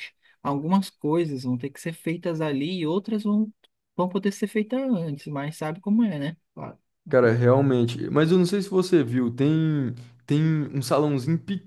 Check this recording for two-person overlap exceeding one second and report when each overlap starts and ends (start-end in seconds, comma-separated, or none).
none